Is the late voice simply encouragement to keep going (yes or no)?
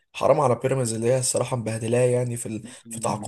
no